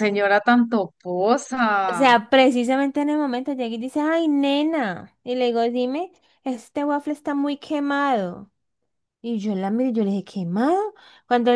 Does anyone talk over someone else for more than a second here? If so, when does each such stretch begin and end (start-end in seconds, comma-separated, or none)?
none